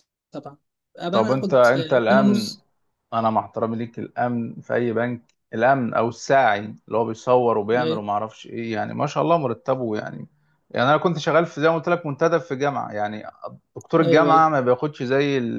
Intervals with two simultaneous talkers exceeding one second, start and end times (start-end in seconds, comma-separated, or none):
1.1-2.6